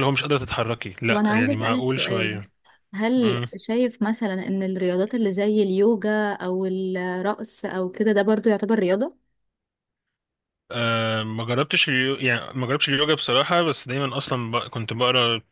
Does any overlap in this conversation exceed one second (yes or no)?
yes